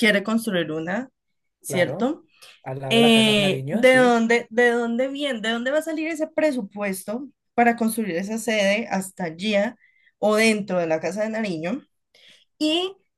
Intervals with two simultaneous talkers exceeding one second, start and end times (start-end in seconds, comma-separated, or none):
2.9-4.2